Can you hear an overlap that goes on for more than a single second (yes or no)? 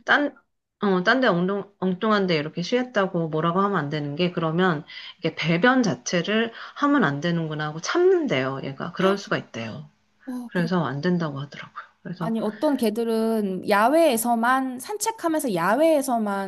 no